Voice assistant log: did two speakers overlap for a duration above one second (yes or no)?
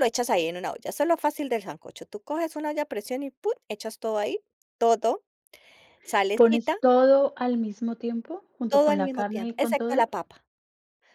yes